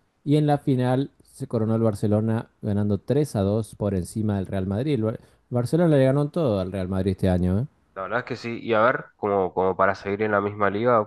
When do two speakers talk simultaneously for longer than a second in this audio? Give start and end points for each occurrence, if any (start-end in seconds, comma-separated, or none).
none